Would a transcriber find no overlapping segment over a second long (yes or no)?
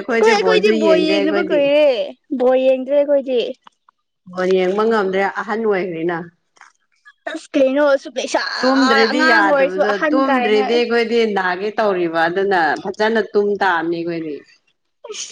no